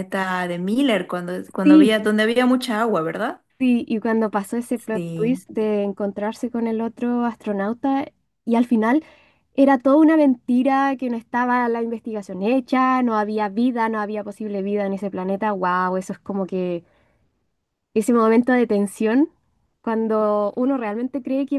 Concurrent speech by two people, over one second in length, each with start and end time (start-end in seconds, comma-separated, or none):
none